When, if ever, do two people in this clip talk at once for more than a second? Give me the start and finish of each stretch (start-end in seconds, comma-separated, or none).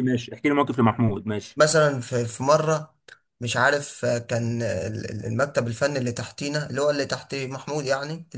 none